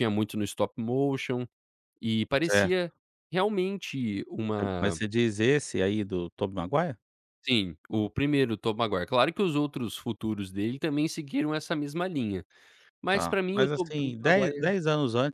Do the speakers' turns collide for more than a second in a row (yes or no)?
yes